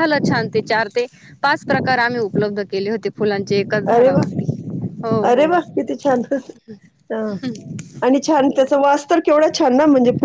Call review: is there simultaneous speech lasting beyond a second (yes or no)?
no